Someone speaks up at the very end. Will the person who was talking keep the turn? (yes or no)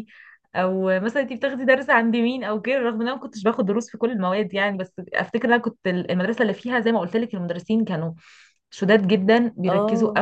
yes